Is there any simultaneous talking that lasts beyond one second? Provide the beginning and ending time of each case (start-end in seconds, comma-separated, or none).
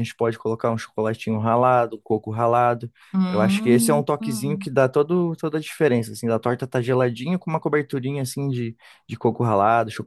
3.3-4.7